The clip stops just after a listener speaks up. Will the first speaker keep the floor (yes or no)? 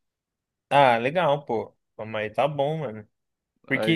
yes